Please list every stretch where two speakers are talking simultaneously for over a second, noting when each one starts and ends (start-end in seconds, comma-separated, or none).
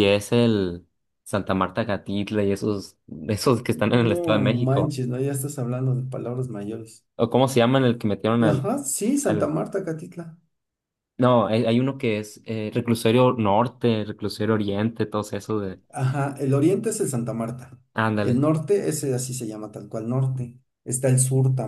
3.7-5.0